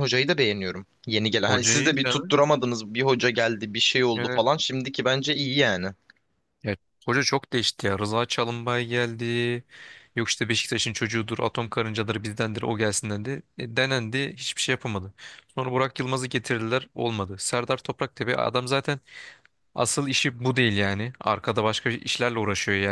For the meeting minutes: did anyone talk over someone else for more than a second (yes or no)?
no